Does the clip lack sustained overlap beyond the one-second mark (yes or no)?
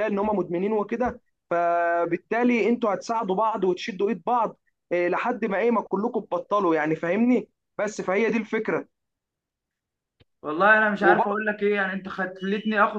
yes